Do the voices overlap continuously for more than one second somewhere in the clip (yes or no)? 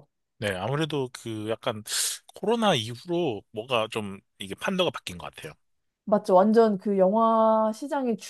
no